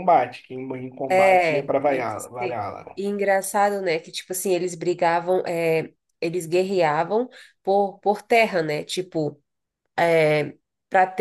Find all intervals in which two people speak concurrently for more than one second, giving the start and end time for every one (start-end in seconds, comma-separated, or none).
1.1-3.0